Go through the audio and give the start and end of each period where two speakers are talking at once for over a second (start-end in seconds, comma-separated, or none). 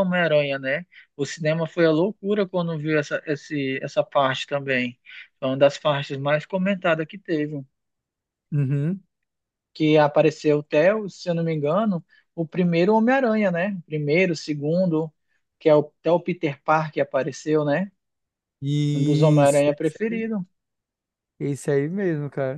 18.9-20.2